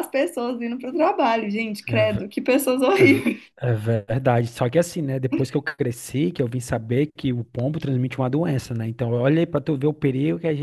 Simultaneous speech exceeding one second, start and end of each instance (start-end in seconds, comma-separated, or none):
none